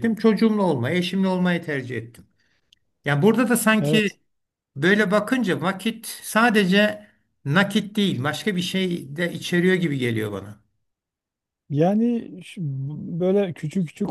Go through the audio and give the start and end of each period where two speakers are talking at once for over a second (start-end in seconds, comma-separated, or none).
none